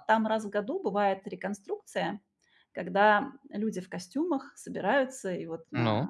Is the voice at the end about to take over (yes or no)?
no